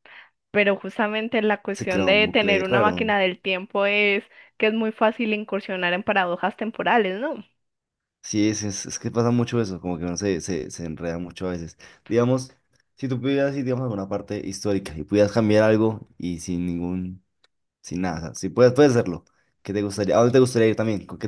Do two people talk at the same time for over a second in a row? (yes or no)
yes